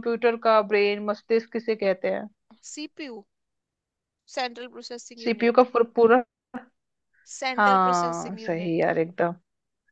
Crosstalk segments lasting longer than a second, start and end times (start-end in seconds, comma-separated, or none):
7.6-8.9